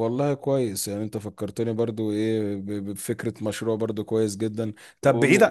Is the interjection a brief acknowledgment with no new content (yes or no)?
yes